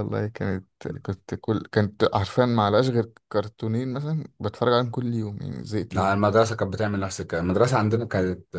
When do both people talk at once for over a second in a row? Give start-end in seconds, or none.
none